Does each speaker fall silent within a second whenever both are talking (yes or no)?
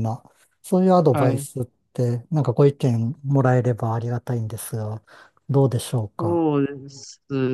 yes